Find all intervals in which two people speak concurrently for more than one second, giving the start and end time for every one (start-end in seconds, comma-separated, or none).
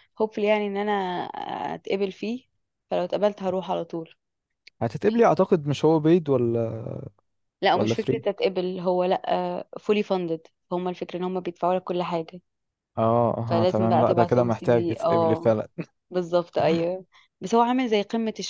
13.5-15.5